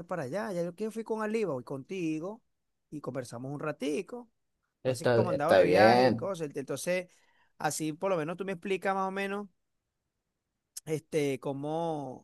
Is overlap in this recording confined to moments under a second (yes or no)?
no